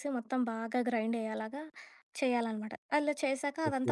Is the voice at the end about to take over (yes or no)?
no